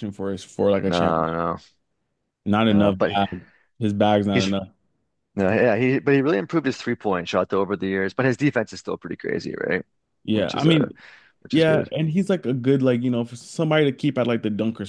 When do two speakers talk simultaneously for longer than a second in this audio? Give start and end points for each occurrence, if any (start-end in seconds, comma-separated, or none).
none